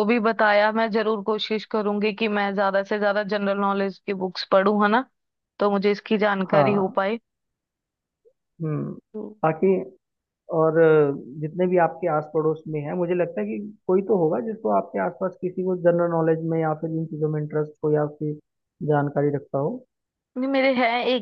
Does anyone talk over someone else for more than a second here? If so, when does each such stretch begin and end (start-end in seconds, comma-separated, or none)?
none